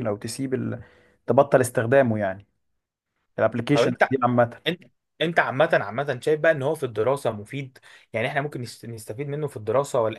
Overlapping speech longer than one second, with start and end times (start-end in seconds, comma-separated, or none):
none